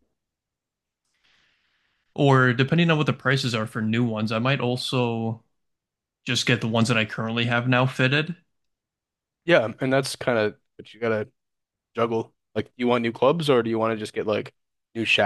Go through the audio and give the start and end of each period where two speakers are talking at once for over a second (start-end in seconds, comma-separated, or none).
none